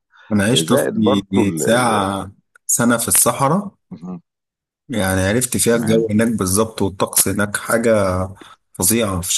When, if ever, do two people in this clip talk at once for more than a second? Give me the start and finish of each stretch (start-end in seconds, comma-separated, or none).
0.5-1.9